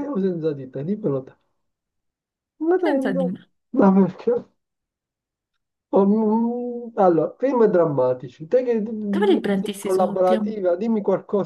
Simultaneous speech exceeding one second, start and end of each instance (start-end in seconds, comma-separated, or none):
9.1-10.5